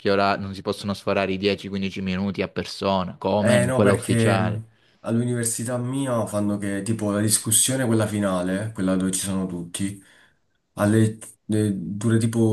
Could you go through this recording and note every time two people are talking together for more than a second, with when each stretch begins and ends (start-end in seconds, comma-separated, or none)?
3.4-4.6